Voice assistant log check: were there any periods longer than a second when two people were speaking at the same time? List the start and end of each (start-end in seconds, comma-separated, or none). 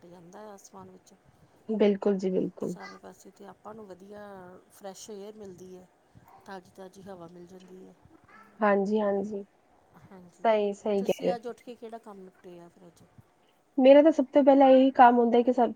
none